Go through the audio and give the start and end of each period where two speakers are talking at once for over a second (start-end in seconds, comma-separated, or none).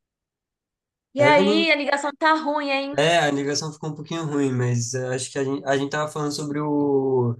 none